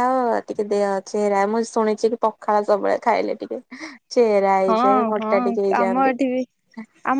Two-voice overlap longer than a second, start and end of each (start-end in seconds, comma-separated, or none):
4.7-6.2